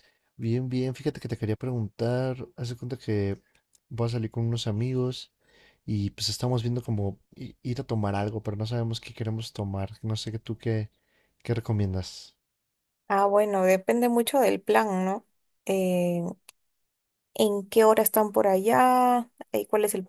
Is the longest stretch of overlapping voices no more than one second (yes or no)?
yes